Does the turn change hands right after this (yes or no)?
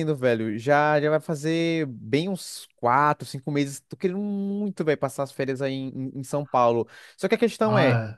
no